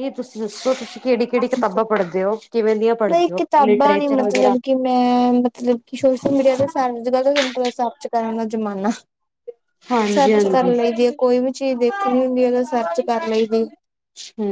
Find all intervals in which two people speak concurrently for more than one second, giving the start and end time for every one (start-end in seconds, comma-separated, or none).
3.1-4.5